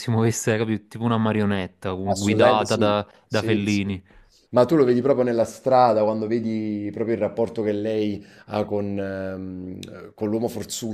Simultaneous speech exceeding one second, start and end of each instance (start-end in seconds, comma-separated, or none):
2.0-3.8